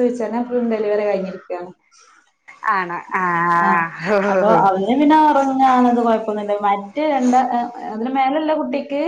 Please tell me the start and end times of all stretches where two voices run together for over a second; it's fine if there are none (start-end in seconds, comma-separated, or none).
none